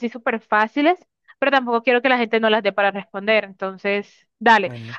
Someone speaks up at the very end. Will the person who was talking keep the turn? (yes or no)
yes